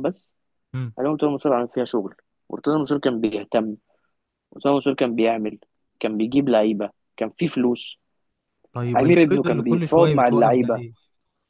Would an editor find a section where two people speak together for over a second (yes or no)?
yes